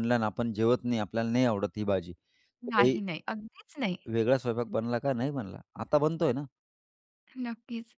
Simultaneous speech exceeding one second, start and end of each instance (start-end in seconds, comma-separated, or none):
none